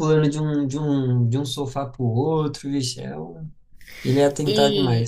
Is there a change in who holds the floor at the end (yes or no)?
yes